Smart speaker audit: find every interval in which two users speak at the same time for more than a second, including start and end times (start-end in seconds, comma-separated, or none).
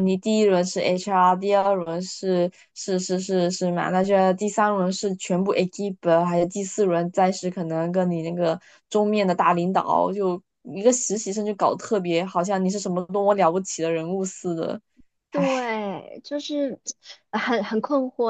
none